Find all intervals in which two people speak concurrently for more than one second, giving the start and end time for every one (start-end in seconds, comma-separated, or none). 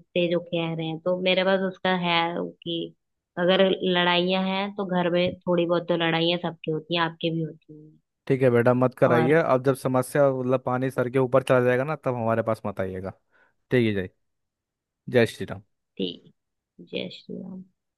none